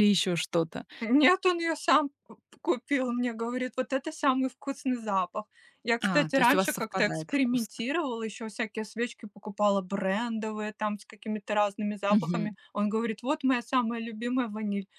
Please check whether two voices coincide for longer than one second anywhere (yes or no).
yes